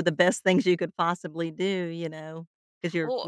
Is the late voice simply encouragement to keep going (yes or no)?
yes